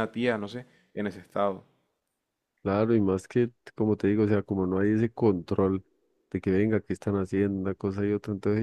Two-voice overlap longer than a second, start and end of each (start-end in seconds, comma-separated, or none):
none